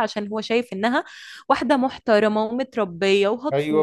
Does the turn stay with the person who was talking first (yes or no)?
yes